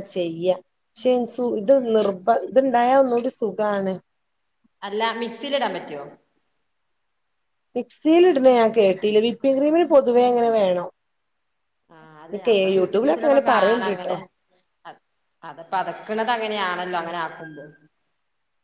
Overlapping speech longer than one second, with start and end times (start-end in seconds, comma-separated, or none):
12.4-14.1